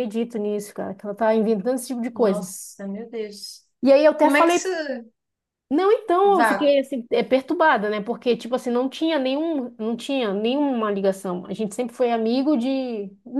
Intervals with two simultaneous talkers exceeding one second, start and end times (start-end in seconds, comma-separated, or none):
none